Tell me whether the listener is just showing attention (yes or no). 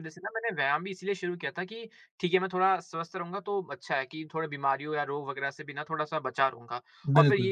yes